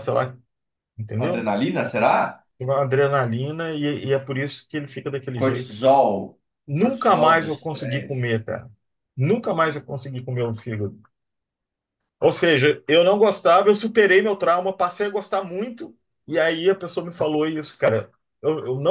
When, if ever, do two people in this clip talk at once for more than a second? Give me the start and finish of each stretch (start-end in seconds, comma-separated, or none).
6.7-8.2